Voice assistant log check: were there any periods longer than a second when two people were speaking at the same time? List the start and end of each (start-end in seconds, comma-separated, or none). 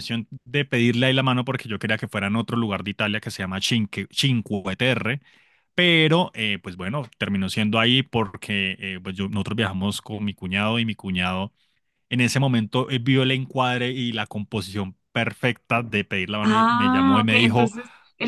16.4-17.7